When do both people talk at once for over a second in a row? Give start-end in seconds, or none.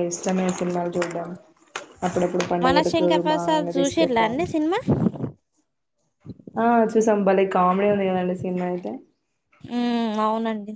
2.6-4.4